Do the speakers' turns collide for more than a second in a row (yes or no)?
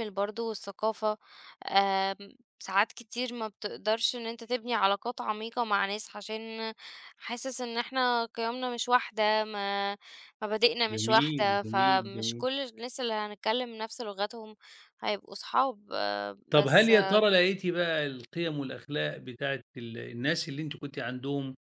yes